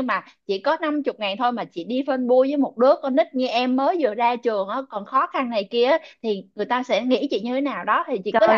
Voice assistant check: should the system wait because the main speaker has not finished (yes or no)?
no